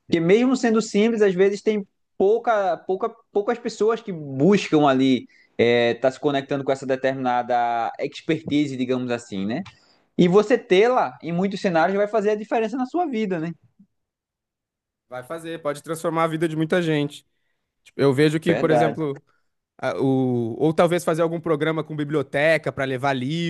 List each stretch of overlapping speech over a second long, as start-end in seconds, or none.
none